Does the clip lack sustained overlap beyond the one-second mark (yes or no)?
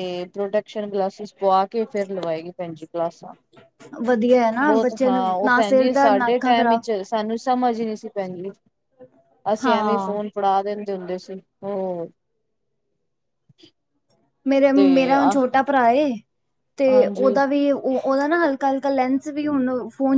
no